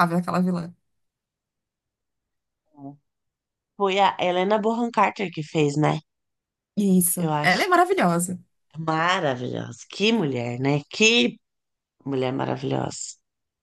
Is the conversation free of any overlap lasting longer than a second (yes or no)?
yes